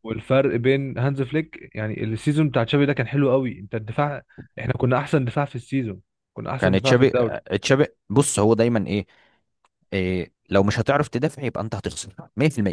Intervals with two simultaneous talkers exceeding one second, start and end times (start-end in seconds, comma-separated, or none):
none